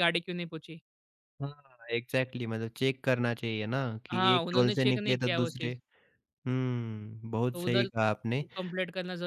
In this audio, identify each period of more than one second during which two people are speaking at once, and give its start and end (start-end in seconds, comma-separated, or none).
4.1-5.7